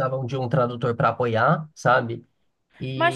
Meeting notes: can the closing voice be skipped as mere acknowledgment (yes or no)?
no